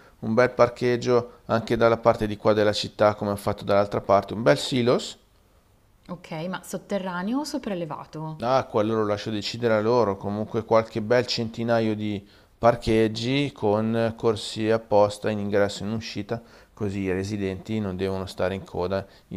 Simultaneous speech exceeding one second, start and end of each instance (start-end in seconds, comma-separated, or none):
none